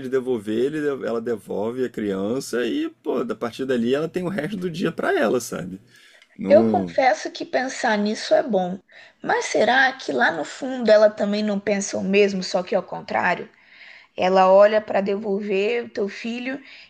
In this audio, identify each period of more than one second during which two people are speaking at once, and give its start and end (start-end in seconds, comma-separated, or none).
none